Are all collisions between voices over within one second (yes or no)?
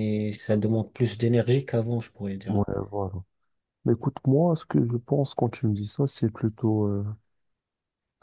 yes